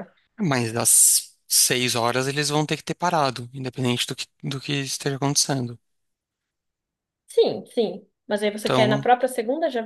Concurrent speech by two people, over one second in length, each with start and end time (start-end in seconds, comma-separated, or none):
none